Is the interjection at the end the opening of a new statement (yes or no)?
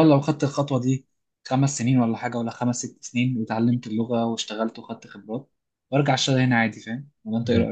yes